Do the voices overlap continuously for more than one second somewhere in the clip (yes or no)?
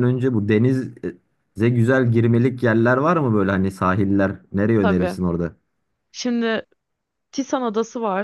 no